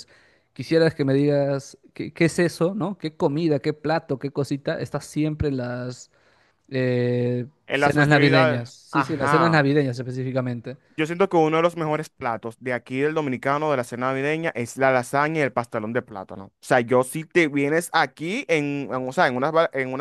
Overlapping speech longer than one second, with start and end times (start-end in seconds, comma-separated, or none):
7.7-9.6